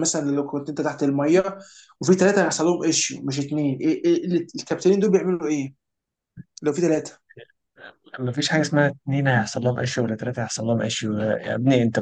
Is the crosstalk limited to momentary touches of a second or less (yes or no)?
yes